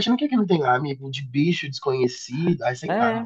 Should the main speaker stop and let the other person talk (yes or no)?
yes